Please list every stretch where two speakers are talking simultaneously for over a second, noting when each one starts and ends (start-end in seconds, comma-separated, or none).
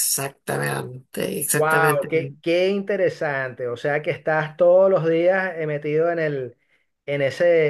none